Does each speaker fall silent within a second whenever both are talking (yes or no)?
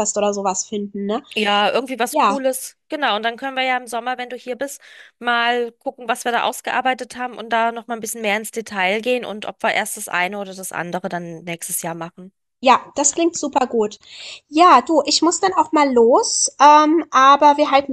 yes